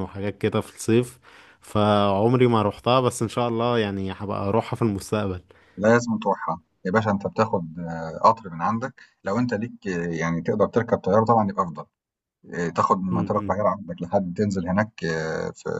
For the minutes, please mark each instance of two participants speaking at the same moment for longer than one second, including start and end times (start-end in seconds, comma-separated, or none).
none